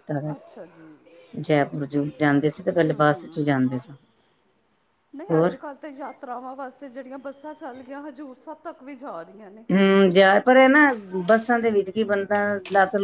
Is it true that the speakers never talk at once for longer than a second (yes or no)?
yes